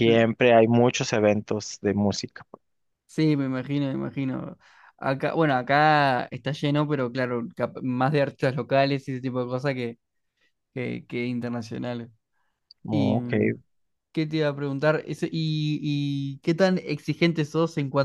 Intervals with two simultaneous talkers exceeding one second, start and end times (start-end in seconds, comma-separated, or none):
none